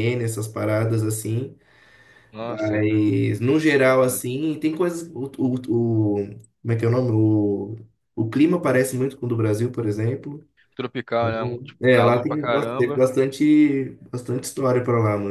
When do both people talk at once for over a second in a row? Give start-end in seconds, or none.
11.2-13.1